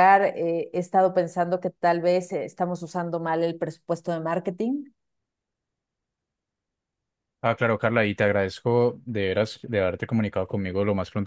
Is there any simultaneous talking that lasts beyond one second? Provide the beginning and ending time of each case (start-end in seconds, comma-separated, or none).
none